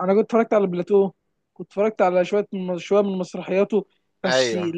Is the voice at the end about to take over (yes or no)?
no